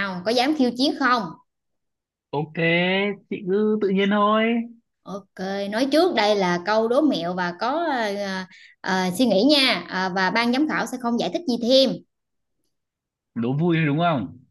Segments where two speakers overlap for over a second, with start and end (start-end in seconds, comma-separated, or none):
none